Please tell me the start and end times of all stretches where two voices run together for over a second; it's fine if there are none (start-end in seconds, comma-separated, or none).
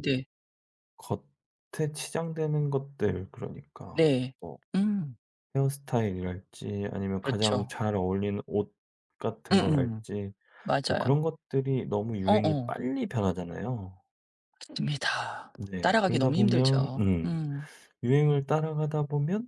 15.7-17.4